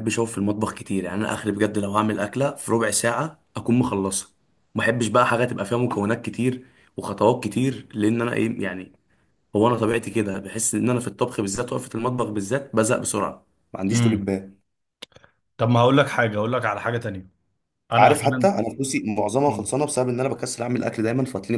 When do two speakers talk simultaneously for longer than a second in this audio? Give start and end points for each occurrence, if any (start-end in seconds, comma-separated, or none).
none